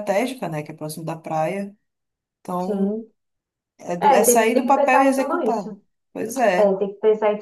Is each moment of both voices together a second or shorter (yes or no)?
no